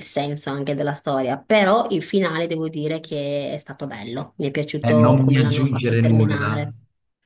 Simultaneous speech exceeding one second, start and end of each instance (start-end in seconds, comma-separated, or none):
4.8-6.6